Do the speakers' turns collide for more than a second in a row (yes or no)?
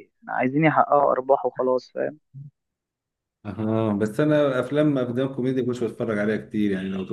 no